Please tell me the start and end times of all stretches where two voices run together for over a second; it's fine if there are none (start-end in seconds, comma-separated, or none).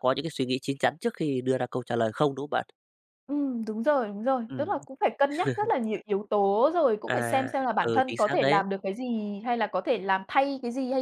7.1-8.6